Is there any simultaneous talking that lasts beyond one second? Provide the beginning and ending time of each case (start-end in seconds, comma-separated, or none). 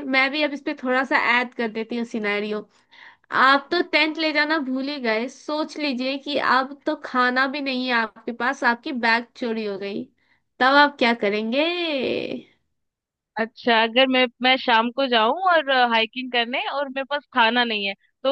none